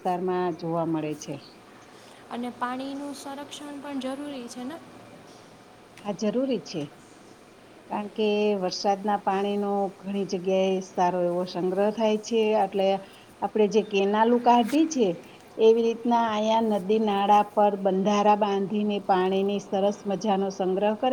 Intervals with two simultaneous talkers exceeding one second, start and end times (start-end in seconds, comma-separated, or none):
none